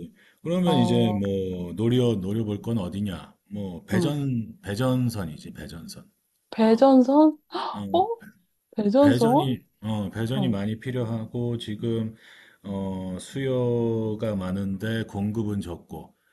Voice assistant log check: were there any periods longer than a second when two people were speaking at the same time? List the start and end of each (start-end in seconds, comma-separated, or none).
none